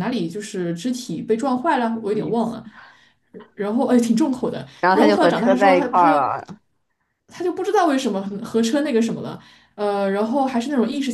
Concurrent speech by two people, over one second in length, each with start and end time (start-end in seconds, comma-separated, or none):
4.8-6.3